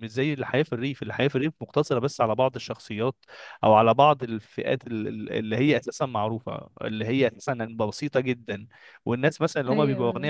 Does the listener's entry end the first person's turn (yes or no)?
no